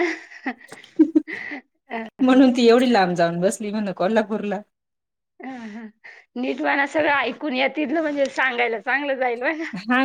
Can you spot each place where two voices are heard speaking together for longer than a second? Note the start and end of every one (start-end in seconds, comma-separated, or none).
none